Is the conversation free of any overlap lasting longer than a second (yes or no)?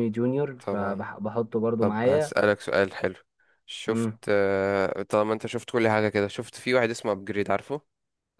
yes